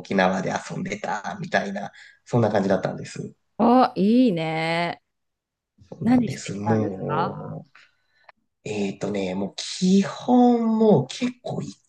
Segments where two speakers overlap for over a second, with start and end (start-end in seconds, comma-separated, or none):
6.0-7.6